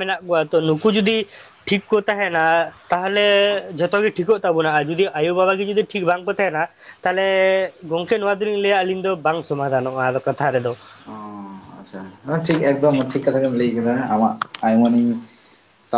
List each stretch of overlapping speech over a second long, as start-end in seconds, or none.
none